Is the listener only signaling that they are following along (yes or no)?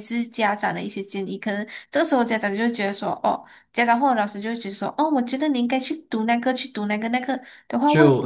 yes